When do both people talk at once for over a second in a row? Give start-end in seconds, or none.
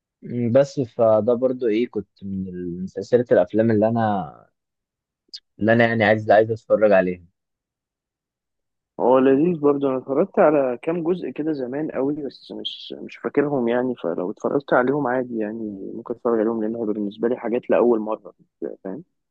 none